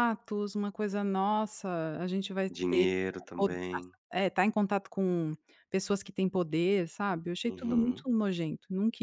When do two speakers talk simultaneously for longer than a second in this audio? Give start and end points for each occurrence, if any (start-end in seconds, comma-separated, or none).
none